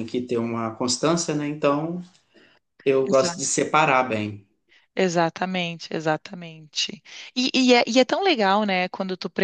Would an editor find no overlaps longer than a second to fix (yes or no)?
yes